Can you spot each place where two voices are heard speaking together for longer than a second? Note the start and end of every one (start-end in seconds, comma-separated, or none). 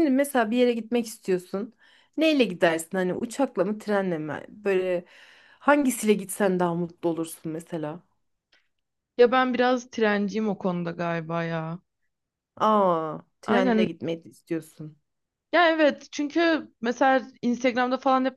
none